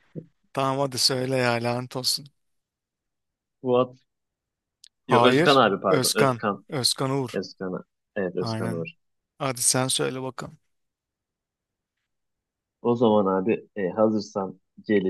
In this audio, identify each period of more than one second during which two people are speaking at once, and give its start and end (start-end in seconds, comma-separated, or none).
5.1-6.6